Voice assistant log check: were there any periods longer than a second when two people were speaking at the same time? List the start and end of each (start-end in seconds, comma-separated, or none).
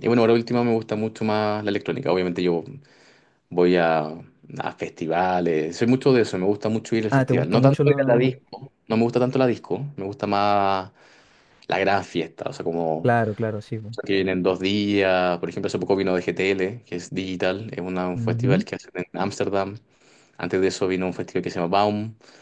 7.1-8.3